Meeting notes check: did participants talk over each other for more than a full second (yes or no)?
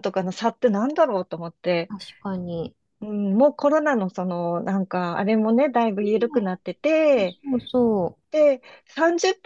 no